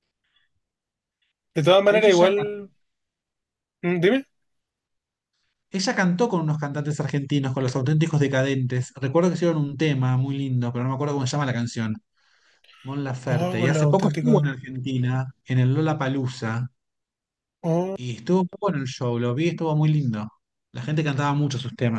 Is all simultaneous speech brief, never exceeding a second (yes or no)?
no